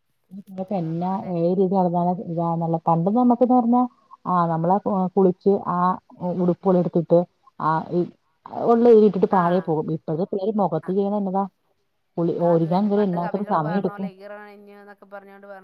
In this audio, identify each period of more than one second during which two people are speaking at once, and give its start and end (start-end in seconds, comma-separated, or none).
12.5-14.1